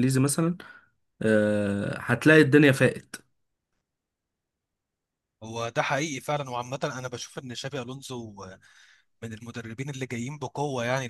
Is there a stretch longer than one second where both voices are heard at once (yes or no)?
no